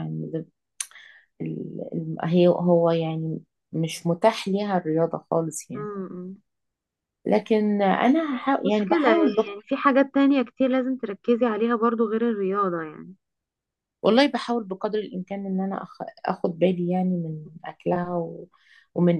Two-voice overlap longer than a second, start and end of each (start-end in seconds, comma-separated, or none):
8.3-9.5